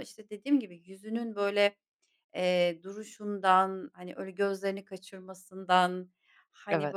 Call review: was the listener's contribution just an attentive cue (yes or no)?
yes